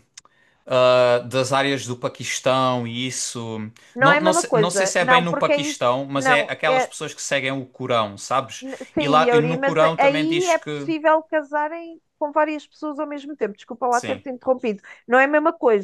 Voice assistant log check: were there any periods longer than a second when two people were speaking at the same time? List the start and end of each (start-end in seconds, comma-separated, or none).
4.0-6.9, 8.6-10.9